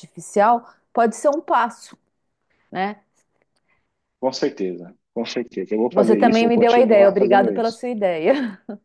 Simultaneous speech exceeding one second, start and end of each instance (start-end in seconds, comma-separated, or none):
5.9-7.8